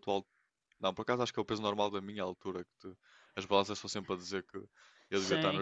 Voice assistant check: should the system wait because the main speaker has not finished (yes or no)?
no